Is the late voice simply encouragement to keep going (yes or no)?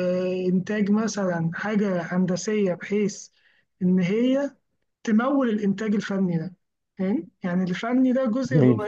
yes